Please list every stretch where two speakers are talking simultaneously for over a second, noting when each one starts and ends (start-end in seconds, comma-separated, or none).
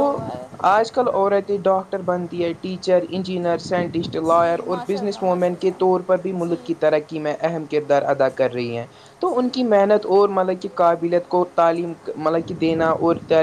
4.3-6.6